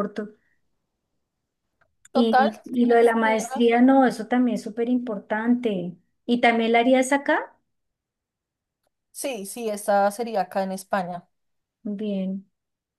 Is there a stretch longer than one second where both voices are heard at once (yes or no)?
yes